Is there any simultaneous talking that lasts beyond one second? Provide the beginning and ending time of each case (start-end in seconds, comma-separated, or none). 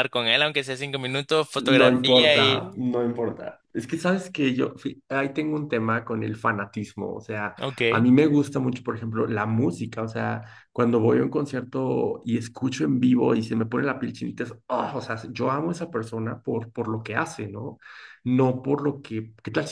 1.6-2.8